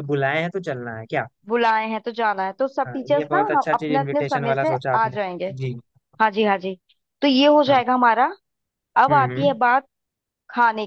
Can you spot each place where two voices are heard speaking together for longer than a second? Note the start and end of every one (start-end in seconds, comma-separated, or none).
2.9-5.2